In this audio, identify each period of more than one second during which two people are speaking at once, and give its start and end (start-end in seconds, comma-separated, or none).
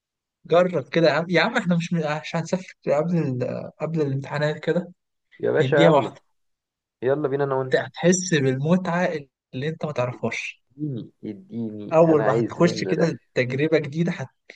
11.9-13.1